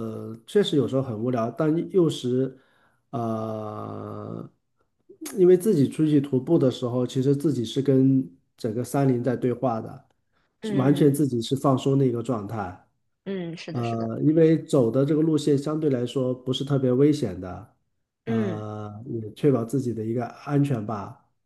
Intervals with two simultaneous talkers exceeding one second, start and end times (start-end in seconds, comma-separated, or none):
none